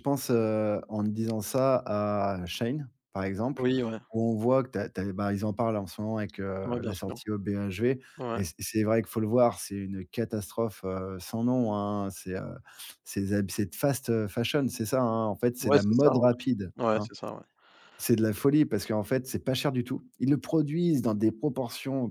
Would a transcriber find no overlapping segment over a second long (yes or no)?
no